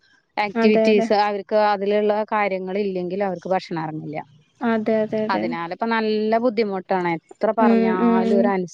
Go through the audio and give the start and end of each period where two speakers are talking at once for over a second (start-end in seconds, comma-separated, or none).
none